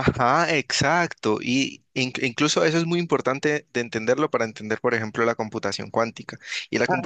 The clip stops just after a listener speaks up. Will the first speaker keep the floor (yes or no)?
yes